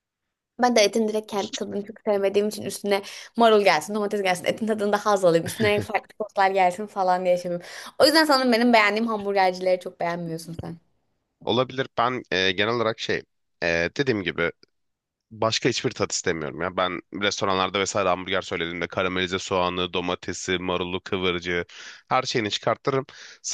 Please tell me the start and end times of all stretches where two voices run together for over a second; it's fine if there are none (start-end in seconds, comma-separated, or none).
none